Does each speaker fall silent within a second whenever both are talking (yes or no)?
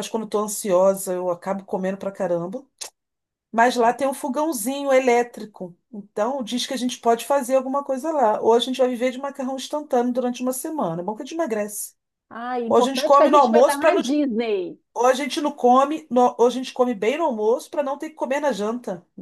no